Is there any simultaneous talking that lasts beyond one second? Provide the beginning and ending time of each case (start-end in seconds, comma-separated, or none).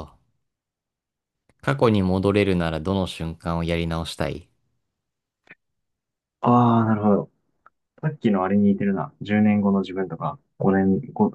none